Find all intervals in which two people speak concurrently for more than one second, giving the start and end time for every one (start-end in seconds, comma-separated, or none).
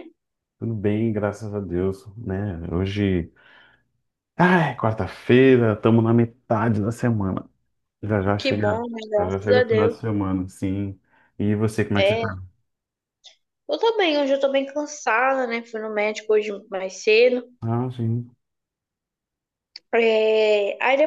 8.4-9.9